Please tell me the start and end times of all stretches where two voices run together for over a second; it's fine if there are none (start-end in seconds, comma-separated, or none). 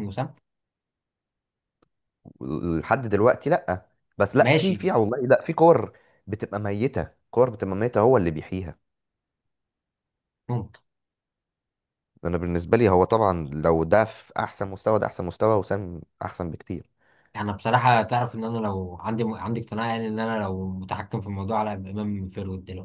none